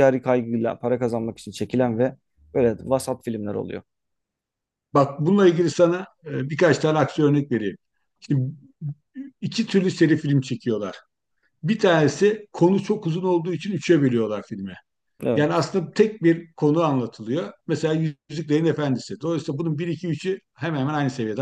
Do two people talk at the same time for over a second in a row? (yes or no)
no